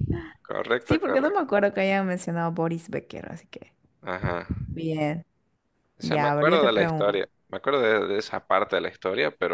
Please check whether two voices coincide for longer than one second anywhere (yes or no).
yes